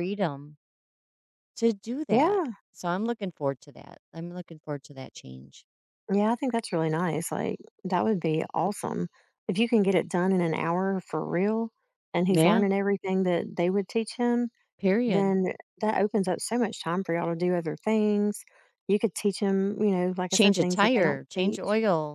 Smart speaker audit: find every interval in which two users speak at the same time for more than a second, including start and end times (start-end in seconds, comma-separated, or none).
20.3-21.6